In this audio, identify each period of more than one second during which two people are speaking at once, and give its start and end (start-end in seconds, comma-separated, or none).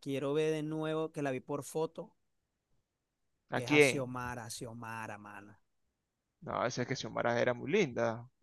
none